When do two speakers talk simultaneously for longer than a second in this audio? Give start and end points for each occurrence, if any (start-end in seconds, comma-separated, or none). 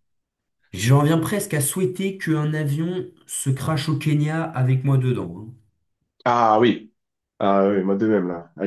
none